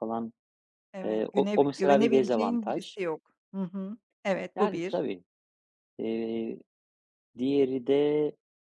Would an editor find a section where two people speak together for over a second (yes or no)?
yes